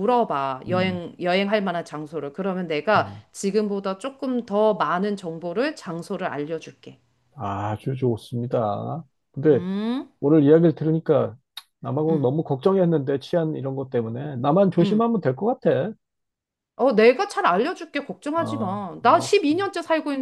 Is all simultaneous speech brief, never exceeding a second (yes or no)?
no